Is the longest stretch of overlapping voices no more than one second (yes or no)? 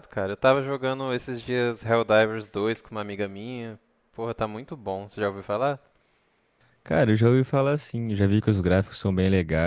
yes